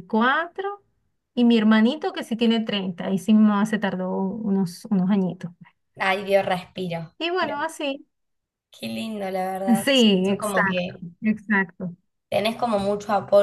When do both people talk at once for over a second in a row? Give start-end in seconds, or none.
9.8-11.0